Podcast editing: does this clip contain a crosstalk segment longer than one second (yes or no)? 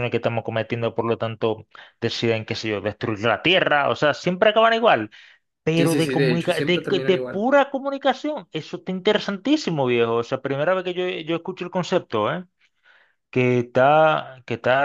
yes